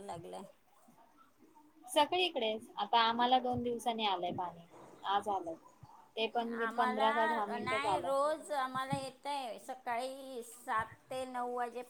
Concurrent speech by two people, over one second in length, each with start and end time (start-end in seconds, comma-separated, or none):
6.7-8.1